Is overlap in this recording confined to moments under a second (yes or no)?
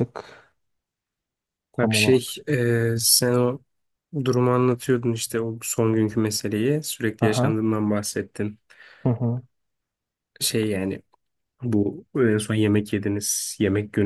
yes